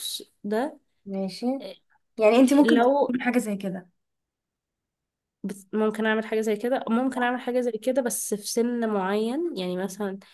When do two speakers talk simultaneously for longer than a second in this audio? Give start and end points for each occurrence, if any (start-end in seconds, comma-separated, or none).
none